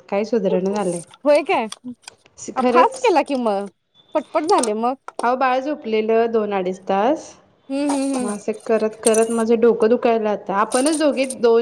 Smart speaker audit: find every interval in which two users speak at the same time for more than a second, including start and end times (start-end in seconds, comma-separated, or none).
none